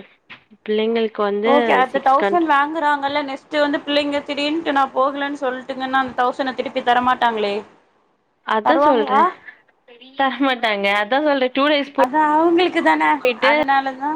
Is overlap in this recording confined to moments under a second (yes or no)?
yes